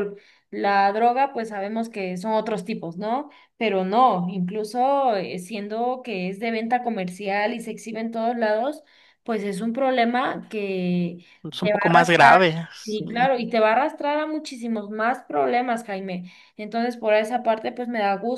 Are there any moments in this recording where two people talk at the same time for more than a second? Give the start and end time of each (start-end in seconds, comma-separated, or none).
11.6-13.0